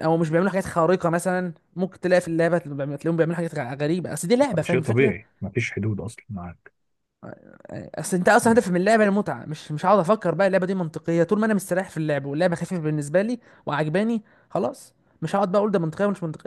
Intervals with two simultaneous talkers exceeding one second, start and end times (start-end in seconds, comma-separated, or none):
none